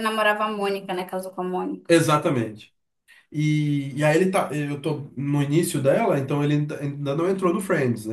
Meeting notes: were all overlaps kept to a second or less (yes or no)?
yes